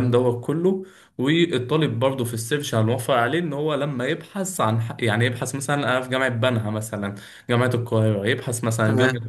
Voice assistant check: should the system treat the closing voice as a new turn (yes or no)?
no